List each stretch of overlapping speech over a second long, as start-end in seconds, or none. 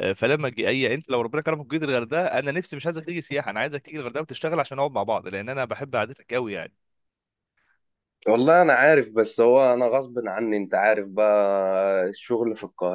none